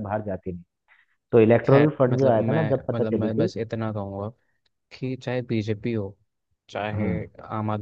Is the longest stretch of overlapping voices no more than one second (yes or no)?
no